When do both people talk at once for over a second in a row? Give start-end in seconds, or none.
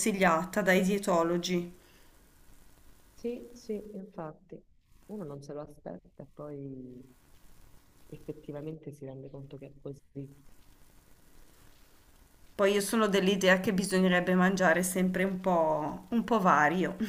none